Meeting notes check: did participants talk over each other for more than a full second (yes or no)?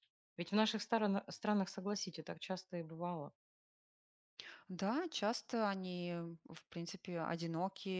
no